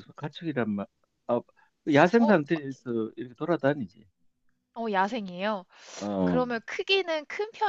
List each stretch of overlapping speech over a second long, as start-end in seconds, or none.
none